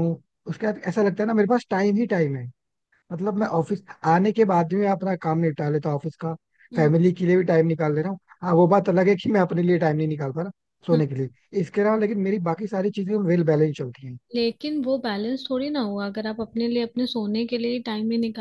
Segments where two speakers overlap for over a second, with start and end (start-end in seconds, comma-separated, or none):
none